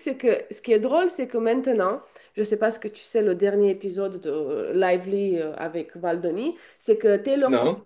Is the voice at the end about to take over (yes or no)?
no